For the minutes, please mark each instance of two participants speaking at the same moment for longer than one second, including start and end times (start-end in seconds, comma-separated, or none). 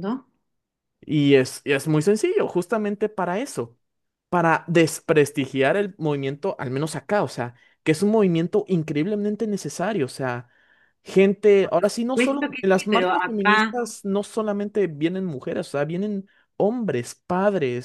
11.6-13.8